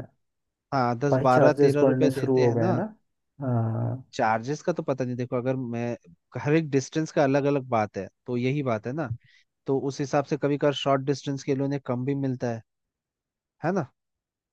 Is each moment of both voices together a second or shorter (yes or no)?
no